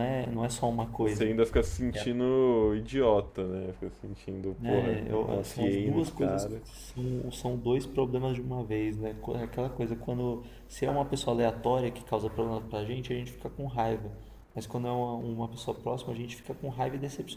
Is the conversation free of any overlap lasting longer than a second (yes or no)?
no